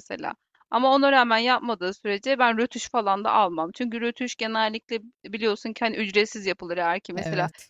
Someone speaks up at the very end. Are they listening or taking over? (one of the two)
listening